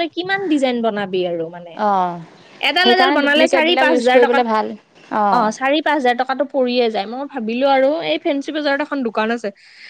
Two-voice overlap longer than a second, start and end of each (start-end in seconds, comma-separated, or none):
2.8-4.4